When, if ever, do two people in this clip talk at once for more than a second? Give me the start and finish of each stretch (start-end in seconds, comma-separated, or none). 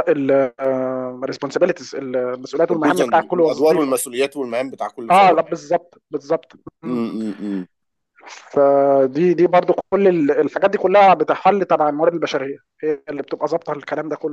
2.7-4.0